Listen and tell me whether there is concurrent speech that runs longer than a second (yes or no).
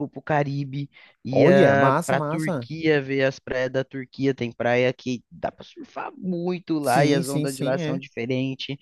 yes